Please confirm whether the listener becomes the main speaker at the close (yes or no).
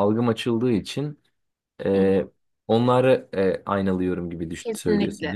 yes